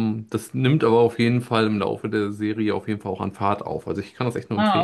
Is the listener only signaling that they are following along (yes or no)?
no